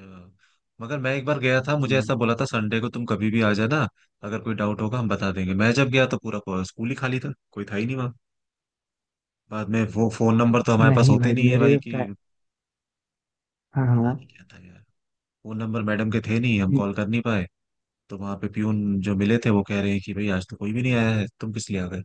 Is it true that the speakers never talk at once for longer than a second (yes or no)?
no